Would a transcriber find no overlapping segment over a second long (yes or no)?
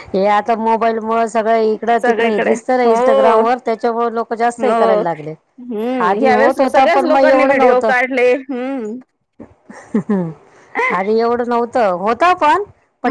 no